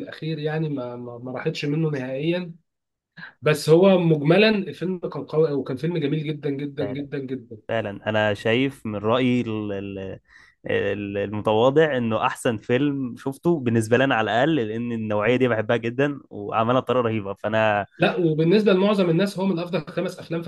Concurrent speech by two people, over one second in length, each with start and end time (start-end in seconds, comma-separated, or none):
none